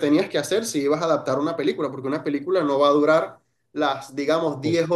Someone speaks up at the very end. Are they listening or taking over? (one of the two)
listening